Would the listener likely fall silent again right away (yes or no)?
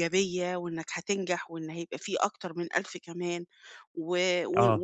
yes